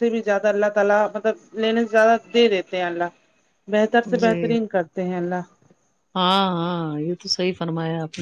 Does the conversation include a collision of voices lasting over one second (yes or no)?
no